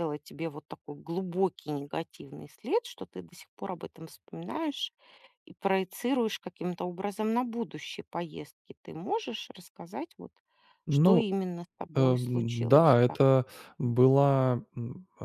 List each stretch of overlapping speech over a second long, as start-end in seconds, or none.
11.9-13.2